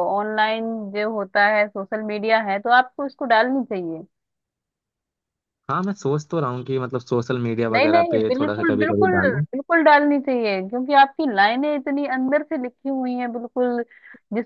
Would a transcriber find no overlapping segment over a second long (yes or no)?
no